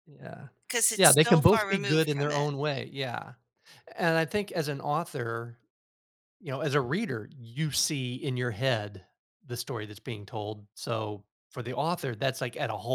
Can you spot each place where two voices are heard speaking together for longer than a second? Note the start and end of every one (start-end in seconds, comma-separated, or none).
1.0-2.5